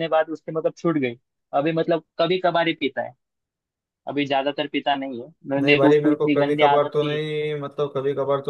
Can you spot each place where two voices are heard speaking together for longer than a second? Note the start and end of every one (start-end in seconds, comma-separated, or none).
5.6-7.2